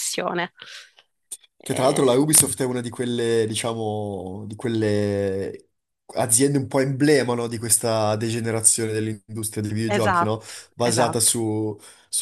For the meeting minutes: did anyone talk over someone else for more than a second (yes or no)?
yes